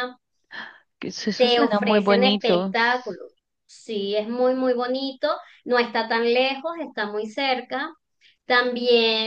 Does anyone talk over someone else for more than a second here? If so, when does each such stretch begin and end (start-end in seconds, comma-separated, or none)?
1.3-2.7